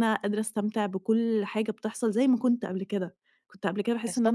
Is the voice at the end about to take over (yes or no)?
no